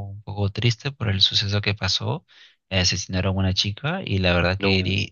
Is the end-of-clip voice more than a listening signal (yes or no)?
no